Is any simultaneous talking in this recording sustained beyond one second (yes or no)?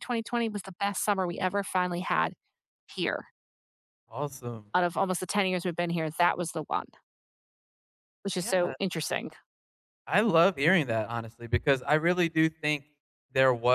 no